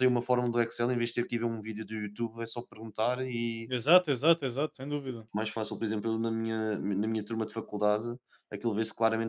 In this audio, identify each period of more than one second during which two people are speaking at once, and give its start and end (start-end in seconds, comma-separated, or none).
none